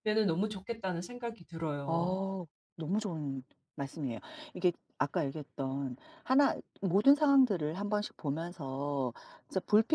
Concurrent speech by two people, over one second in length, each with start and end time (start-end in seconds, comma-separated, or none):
none